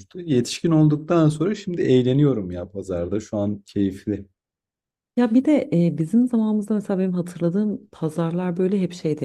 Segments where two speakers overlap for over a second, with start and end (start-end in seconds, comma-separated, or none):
none